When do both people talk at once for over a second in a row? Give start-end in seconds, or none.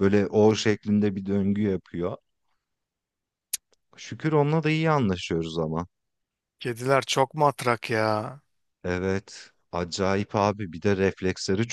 none